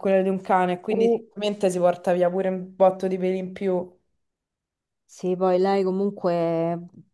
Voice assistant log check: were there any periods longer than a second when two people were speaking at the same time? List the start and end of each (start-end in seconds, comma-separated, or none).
none